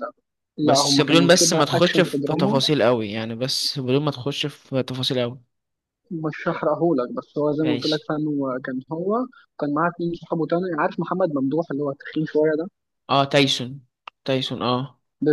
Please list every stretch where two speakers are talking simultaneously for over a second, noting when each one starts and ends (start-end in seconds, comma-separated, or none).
0.6-2.6